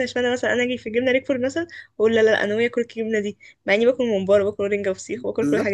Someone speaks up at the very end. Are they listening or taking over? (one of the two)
taking over